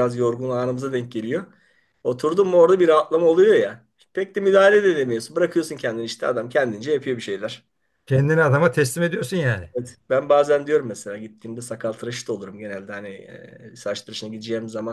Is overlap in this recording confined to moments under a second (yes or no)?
yes